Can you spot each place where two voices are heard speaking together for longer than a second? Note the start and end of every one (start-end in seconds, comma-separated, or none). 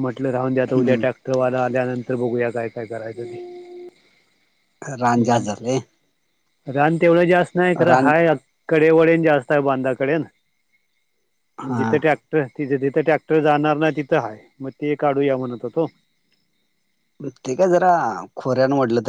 none